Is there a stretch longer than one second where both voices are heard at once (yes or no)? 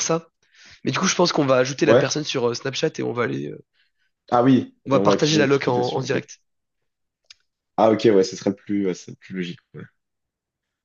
yes